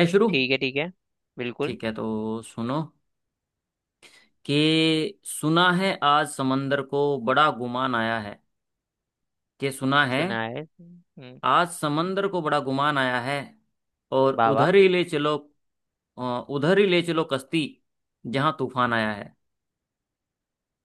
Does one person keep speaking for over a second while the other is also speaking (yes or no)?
no